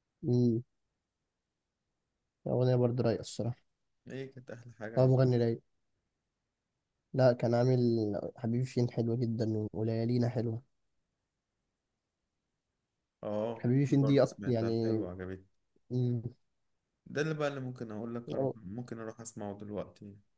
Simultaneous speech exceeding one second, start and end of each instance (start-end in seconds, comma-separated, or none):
13.6-15.0